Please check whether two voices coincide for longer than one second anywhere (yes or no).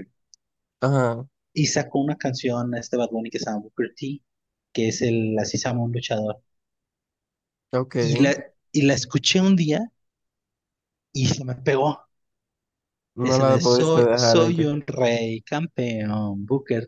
yes